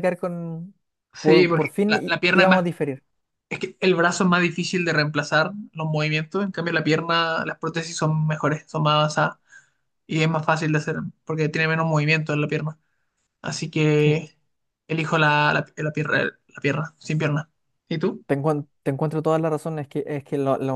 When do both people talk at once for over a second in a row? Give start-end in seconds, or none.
1.2-2.7